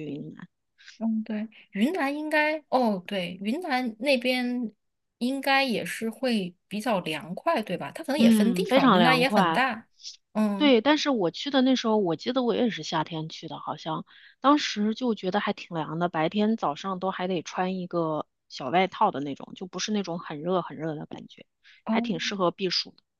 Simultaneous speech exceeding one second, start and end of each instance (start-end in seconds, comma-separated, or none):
8.2-9.7